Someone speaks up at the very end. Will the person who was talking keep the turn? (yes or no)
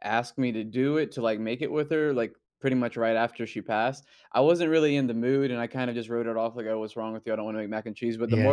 yes